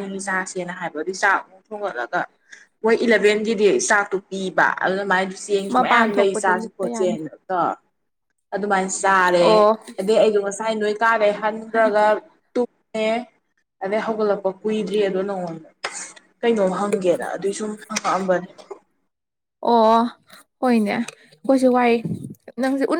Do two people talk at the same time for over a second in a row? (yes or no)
yes